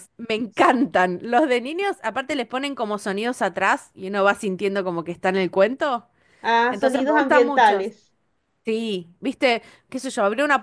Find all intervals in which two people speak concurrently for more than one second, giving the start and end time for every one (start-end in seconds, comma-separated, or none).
6.7-7.9